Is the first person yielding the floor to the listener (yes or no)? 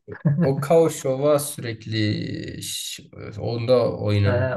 yes